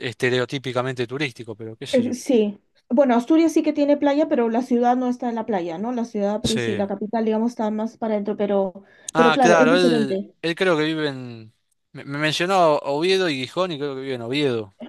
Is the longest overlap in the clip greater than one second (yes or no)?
yes